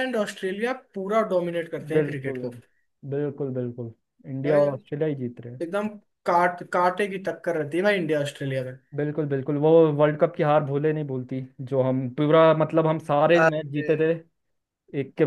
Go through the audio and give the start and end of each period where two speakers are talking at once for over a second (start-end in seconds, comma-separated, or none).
none